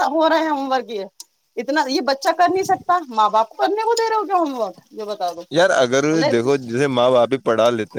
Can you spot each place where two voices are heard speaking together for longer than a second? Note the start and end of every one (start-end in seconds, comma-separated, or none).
none